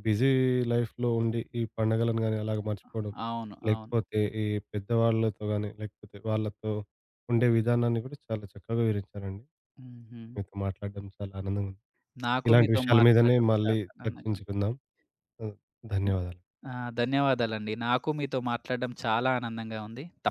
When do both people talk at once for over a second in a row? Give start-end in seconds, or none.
12.5-14.5